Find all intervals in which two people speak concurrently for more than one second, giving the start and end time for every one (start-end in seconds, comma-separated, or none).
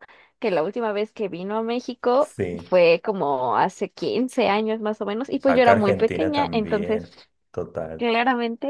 5.5-7.0